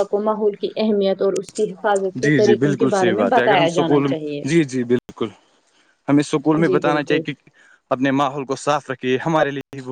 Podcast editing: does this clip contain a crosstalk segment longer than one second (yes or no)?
yes